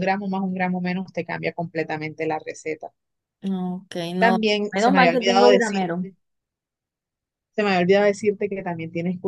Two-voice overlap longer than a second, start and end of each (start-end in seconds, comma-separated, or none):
4.2-5.9